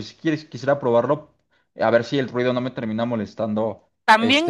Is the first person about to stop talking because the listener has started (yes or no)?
yes